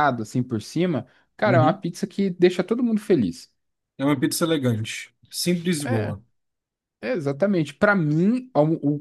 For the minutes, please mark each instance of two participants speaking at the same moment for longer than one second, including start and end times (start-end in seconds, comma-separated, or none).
none